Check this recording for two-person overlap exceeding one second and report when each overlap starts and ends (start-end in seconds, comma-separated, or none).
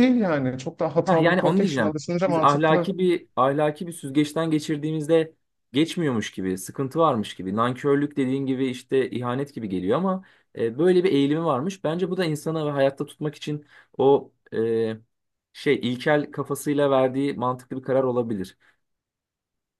1.0-2.9